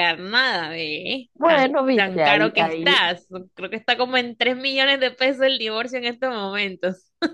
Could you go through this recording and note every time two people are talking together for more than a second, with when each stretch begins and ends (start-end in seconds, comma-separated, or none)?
1.4-3.0